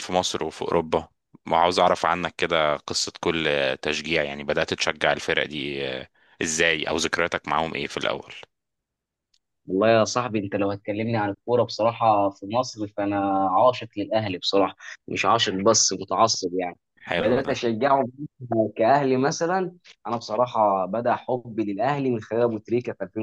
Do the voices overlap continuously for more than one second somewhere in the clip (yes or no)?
no